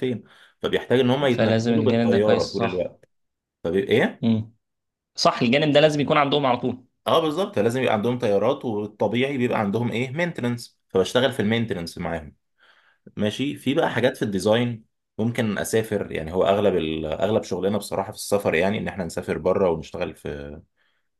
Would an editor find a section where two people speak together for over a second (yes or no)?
yes